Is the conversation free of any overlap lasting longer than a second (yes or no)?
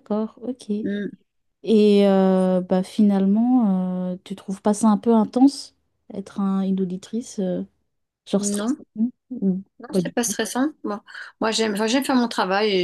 yes